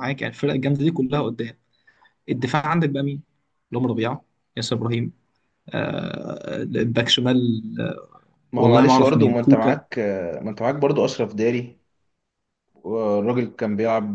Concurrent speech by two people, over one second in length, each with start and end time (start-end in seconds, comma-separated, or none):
8.5-9.8